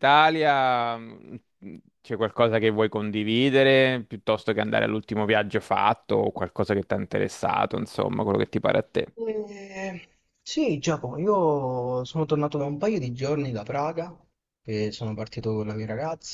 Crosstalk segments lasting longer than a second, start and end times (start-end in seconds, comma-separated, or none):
none